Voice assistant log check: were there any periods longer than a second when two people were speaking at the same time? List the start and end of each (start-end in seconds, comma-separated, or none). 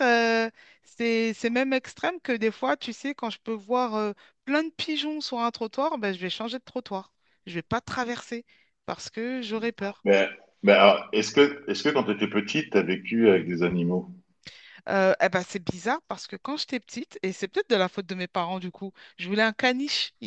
none